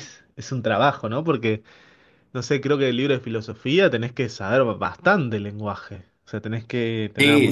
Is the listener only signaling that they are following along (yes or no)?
no